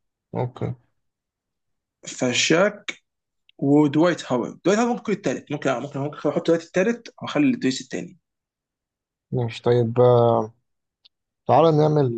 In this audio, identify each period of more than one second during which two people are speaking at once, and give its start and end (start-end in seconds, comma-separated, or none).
none